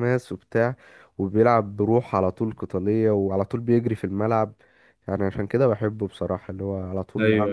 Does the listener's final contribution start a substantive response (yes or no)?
no